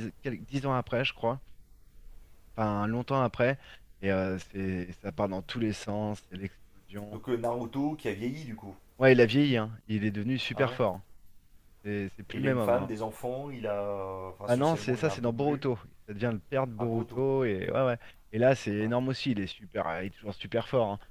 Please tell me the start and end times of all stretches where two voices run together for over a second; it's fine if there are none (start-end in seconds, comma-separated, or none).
14.4-15.7